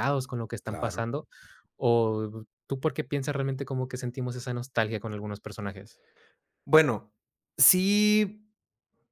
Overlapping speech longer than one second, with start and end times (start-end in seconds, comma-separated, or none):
none